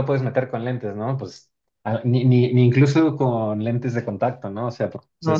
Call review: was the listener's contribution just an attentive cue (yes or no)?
no